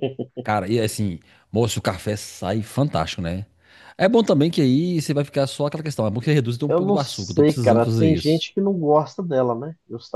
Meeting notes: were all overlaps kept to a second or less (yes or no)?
no